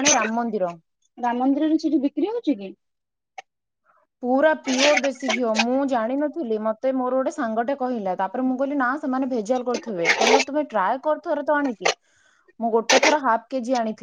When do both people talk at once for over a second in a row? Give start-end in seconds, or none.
none